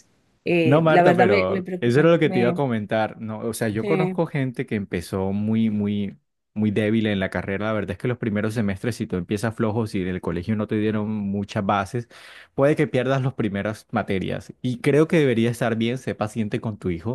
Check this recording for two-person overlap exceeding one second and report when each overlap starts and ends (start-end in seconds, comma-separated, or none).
0.6-2.6